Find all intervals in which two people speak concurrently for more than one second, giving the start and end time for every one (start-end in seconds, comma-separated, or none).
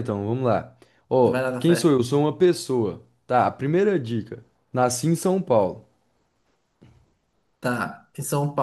none